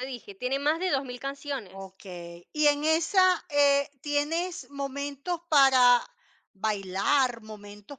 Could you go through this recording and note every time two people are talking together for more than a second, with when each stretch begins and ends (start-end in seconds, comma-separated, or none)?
none